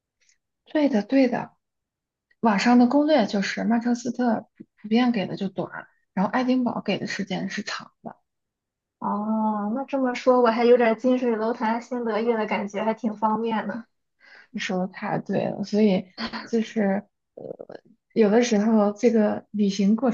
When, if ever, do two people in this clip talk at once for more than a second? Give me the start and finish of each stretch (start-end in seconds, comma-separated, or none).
none